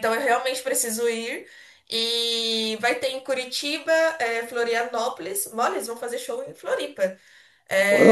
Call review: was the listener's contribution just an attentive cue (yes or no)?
yes